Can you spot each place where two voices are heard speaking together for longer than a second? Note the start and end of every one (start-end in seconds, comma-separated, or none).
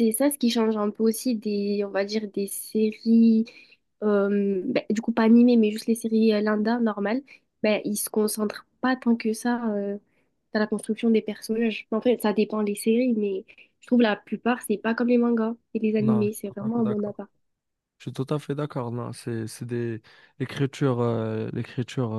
16.0-17.2